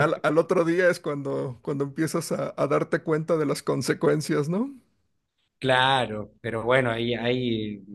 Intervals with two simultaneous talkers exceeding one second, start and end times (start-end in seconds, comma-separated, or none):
none